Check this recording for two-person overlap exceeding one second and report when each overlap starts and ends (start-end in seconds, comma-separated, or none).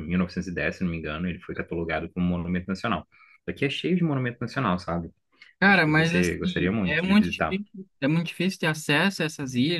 5.6-7.6